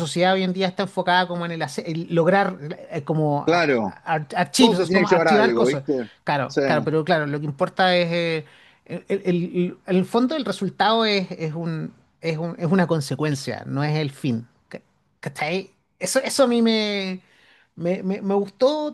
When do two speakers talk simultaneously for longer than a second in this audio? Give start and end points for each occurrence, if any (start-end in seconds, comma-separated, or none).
4.6-5.8